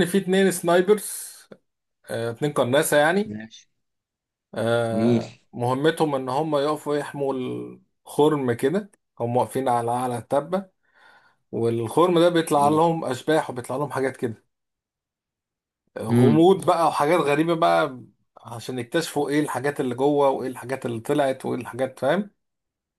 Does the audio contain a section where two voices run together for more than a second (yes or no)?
no